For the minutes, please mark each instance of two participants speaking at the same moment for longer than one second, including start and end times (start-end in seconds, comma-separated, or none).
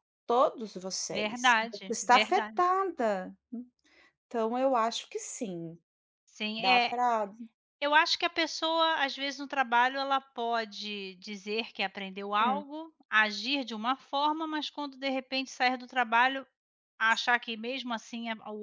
1.1-2.6